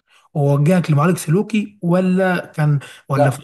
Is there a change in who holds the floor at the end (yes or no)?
yes